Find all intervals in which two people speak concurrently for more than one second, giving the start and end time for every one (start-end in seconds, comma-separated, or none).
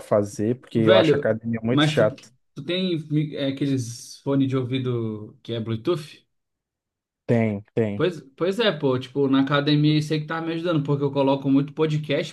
0.7-2.1